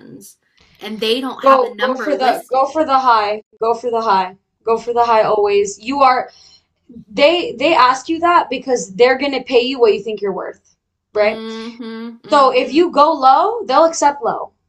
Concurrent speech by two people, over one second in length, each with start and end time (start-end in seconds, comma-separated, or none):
1.4-2.9